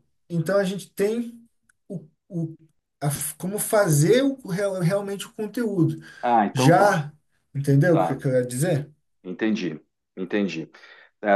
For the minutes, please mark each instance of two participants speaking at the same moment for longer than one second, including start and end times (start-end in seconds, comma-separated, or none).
none